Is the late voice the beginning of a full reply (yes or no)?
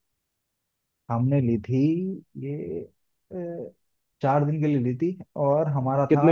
yes